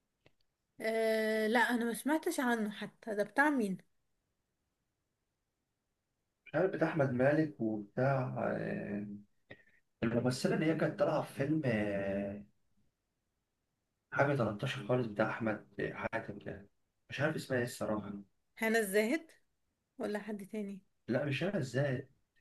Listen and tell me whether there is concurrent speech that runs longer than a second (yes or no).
no